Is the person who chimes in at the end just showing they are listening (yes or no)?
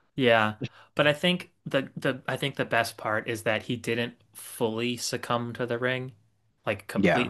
yes